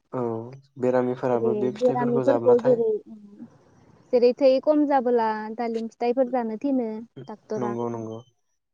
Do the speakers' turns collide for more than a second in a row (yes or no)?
yes